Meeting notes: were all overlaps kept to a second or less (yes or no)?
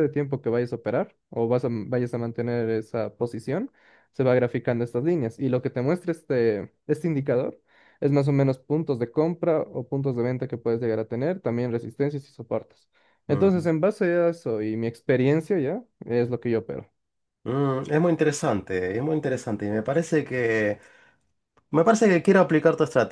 yes